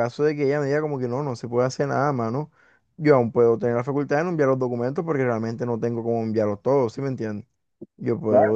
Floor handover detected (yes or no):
yes